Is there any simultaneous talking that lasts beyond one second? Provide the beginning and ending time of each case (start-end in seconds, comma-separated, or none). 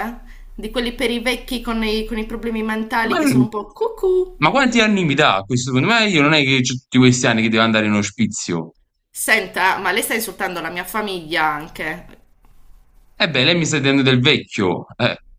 none